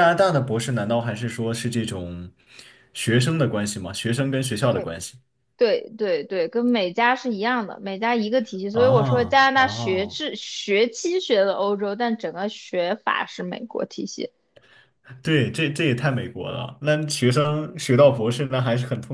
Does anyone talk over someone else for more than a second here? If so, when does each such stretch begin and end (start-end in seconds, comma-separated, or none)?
8.7-10.2